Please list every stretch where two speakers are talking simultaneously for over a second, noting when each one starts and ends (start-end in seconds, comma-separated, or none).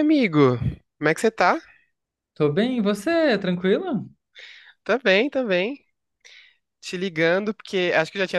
none